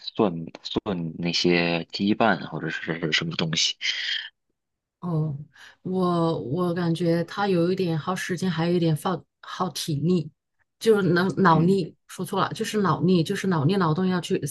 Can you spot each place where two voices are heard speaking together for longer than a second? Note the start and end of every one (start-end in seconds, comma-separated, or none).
none